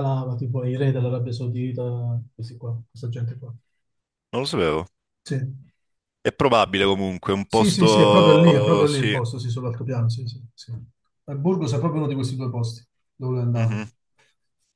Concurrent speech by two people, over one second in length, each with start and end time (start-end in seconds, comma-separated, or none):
7.5-9.2